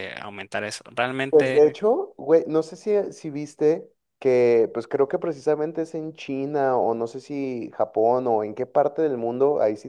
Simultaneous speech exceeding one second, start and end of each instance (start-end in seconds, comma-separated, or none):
none